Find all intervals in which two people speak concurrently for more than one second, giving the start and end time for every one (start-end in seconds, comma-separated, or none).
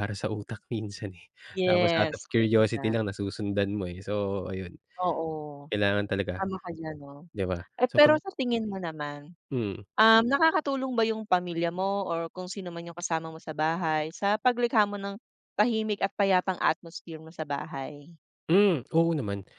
1.6-3.0